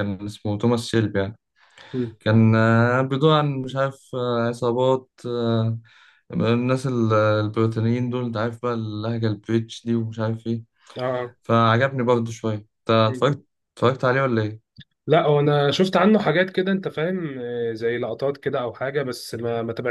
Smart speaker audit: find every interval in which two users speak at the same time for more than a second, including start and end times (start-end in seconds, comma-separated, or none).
none